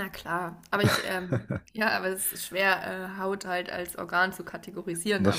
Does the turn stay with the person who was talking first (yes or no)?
yes